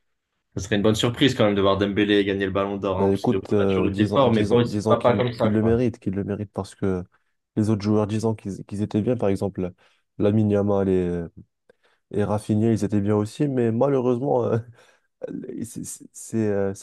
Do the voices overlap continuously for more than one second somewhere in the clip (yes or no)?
yes